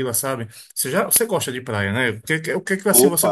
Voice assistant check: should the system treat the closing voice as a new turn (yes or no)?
no